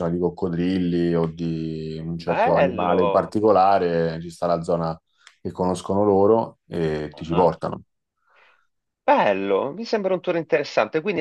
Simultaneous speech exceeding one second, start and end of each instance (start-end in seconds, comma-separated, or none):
2.2-3.4